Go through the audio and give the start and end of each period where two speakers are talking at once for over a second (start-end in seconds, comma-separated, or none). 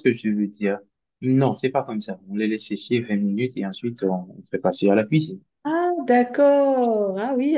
none